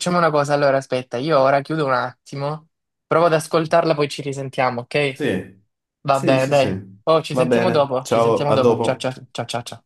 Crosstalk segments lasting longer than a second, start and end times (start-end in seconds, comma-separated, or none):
6.1-9.1